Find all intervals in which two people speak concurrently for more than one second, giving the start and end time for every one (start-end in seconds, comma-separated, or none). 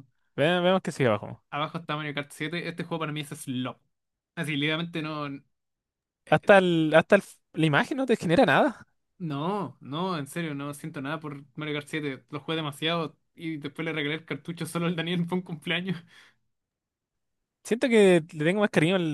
none